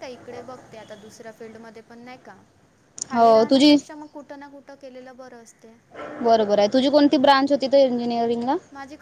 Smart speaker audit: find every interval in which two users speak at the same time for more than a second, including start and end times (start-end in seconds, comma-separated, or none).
none